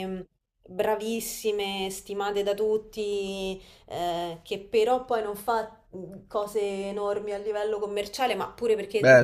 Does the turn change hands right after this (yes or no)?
yes